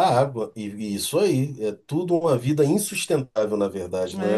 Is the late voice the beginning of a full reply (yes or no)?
yes